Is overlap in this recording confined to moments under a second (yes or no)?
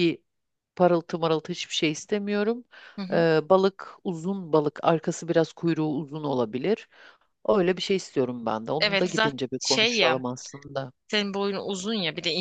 no